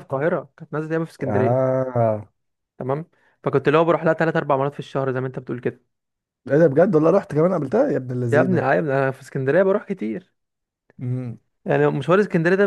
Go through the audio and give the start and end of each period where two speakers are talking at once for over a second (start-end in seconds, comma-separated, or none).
none